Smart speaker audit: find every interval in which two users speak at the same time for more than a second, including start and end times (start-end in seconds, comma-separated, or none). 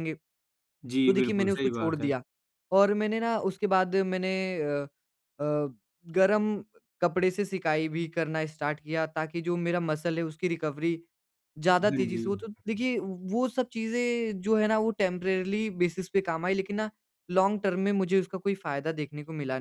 0.8-2.1